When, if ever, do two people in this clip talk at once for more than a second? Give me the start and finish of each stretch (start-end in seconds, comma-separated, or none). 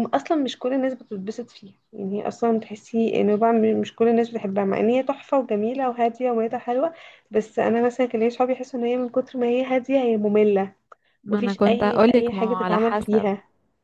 11.3-13.3